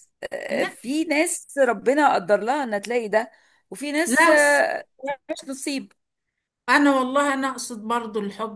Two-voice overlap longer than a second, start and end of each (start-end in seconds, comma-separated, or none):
none